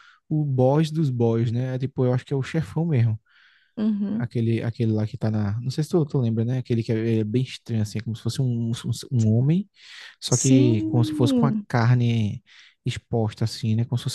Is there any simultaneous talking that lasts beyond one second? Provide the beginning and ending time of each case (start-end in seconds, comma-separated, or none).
10.3-11.6